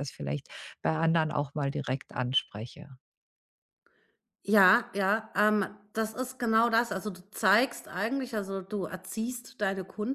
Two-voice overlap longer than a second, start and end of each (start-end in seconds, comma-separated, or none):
none